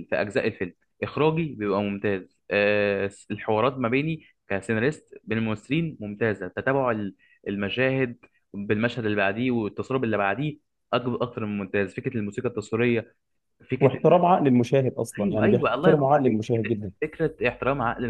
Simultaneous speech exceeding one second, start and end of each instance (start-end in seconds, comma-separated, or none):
15.2-16.9